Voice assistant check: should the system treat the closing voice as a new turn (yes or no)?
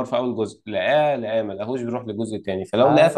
no